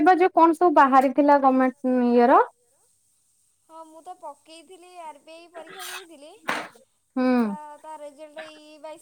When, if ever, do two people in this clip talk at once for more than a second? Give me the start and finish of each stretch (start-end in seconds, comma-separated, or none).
none